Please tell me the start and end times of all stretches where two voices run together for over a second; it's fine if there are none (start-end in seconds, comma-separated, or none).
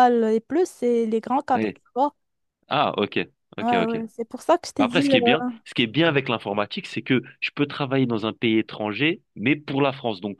none